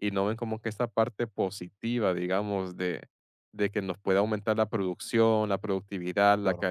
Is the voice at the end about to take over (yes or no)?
no